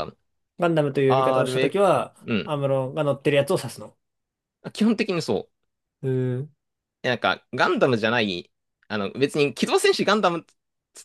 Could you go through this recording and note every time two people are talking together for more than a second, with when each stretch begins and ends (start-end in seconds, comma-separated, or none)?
1.1-2.5